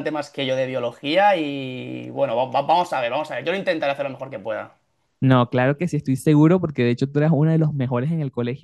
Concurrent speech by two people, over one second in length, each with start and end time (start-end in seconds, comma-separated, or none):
none